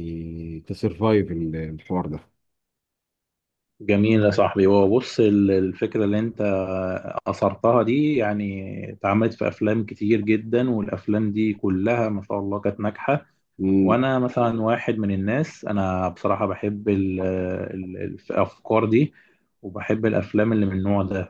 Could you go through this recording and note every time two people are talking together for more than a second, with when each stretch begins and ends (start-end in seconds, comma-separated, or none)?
none